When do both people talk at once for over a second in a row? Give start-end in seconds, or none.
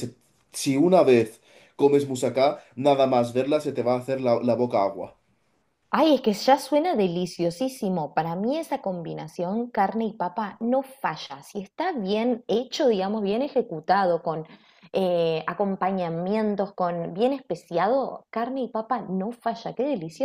none